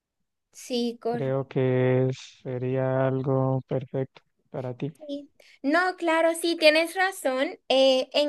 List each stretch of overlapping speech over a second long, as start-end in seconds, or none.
none